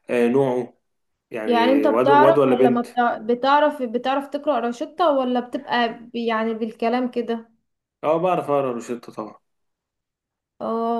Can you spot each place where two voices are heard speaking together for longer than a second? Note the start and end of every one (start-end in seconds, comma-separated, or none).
1.4-2.9